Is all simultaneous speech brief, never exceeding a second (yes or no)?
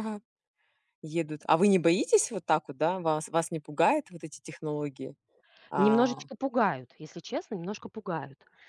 yes